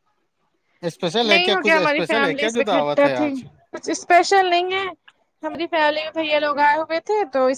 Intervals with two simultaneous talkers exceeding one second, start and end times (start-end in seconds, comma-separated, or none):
1.2-3.3